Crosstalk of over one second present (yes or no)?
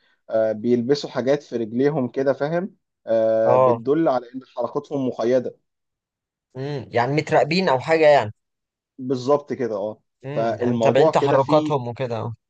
yes